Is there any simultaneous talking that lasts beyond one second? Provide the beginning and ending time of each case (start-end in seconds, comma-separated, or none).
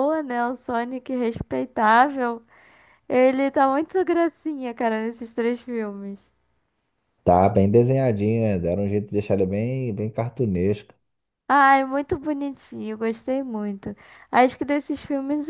none